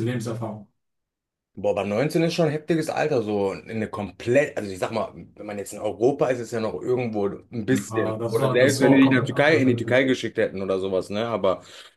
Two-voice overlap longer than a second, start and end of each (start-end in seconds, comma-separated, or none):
7.7-10.0